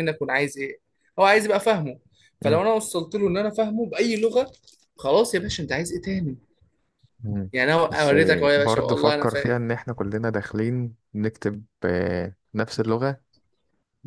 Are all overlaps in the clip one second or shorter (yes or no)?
no